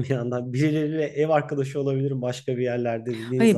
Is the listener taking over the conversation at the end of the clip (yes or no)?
yes